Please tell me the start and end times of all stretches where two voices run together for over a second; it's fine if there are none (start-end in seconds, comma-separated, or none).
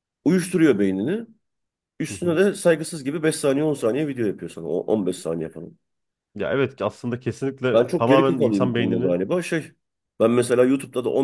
7.7-9.1